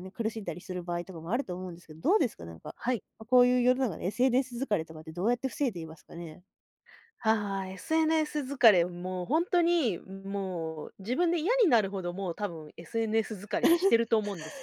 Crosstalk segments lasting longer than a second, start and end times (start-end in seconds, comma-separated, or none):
none